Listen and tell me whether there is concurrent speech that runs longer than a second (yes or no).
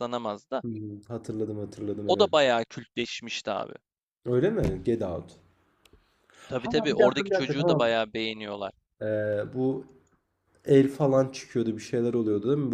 yes